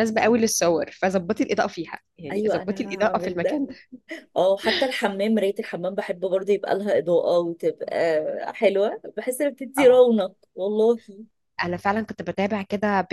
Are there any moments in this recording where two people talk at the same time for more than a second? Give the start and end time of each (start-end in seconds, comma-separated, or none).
2.3-3.6